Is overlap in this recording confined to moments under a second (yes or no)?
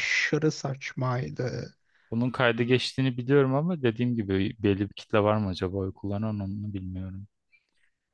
yes